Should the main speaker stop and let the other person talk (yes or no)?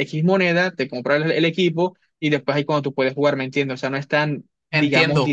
yes